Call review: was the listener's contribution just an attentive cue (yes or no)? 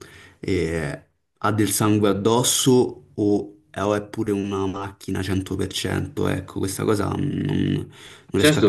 no